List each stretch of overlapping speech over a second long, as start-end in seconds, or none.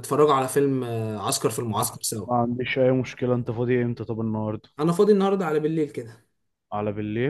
none